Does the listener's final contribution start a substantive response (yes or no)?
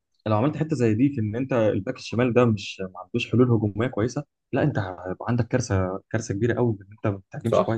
yes